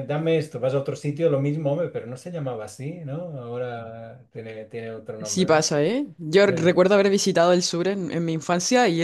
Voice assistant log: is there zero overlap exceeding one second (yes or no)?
yes